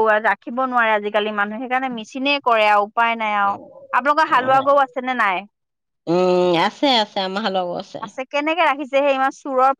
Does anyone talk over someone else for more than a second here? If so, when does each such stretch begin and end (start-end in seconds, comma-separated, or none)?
none